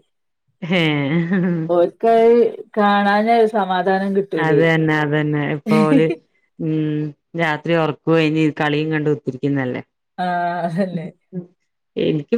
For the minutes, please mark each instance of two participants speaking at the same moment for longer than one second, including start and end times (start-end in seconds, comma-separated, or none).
none